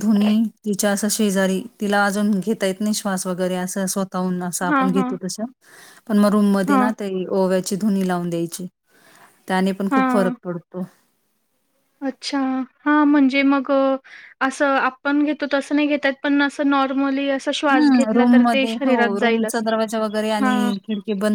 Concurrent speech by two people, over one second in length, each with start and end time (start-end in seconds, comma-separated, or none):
none